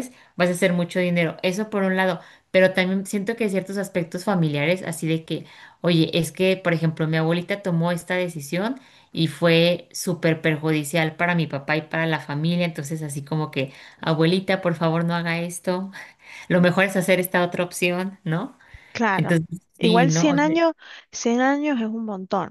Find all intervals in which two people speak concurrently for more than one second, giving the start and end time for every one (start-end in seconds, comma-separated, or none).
19.1-20.6